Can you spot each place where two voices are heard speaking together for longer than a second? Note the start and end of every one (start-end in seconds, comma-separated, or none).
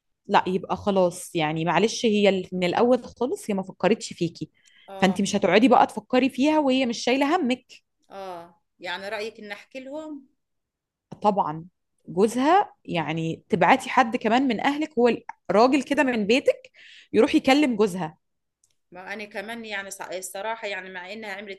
none